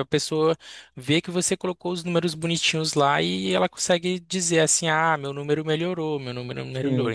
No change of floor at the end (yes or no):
no